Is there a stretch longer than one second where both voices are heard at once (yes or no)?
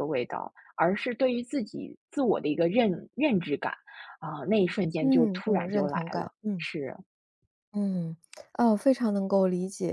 yes